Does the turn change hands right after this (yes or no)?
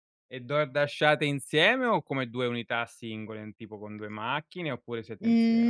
yes